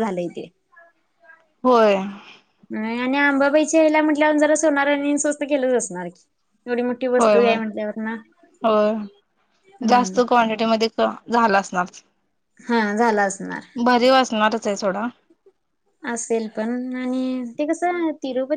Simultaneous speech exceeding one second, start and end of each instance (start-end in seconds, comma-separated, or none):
none